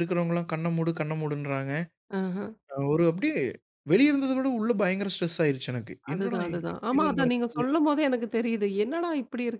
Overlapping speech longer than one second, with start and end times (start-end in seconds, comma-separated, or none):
6.1-7.6